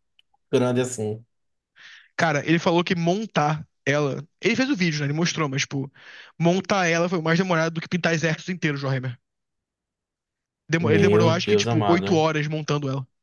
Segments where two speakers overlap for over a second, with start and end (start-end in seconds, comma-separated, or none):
10.8-12.2